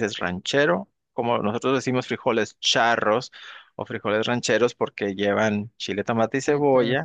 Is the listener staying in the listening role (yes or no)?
yes